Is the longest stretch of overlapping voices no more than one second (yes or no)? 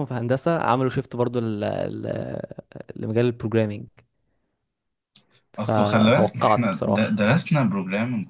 no